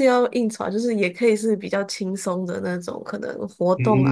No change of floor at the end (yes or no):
no